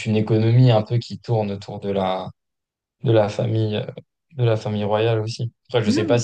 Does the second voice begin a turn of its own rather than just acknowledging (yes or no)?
no